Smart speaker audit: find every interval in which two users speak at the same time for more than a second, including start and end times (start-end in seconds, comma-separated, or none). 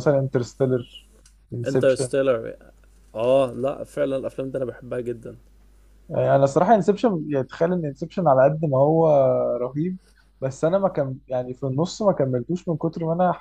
none